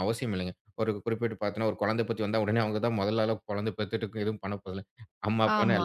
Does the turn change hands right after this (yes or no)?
yes